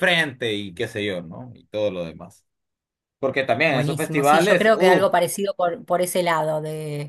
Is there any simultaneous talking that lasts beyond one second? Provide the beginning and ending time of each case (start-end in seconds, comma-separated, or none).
3.7-5.1